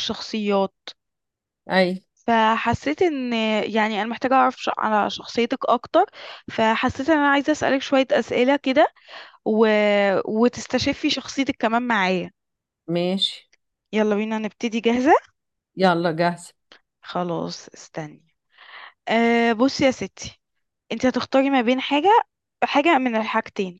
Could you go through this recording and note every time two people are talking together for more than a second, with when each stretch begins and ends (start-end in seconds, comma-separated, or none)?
none